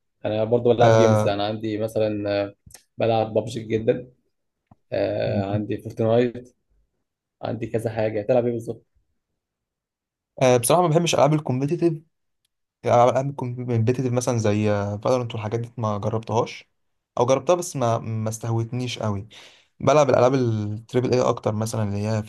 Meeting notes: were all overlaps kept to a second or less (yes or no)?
yes